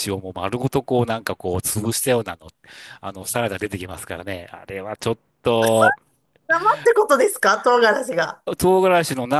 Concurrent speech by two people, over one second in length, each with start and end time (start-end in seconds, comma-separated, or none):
none